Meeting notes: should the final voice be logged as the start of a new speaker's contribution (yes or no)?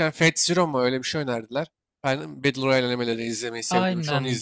yes